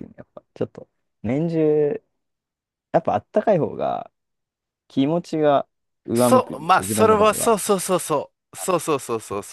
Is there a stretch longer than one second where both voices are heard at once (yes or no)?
yes